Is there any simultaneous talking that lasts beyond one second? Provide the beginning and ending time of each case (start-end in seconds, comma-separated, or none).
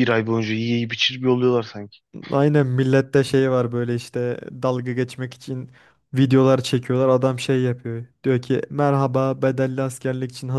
none